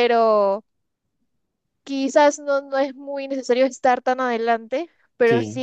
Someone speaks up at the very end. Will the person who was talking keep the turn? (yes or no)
yes